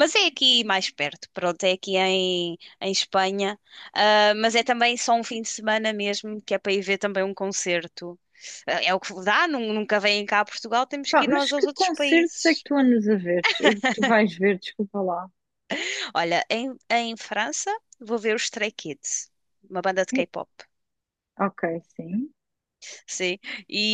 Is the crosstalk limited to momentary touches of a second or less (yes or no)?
no